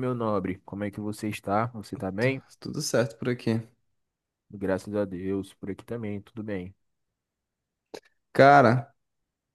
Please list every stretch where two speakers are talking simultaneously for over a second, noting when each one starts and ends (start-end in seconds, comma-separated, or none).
none